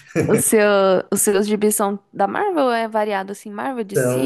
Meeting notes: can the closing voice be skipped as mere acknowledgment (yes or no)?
no